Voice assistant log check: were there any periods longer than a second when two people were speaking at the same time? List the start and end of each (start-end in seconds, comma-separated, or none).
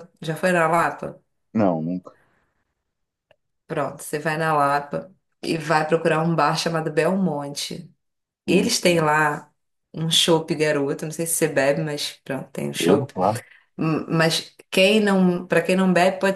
none